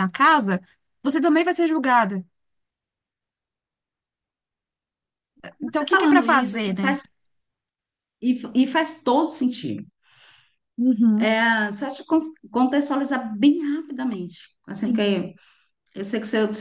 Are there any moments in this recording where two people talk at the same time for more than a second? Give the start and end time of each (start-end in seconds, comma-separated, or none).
5.7-7.0